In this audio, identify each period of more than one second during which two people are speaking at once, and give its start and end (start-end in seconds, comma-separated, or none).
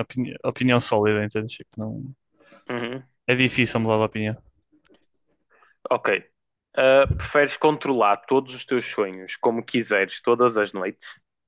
none